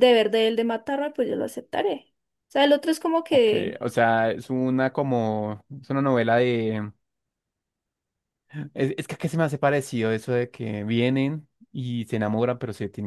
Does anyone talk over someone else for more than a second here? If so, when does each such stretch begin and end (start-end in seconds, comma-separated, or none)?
none